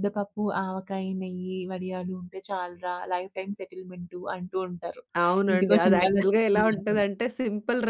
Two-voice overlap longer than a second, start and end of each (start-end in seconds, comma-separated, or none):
5.5-7.0